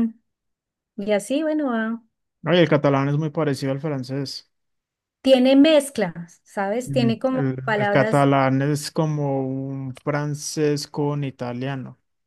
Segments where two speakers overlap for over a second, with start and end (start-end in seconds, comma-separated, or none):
6.8-8.3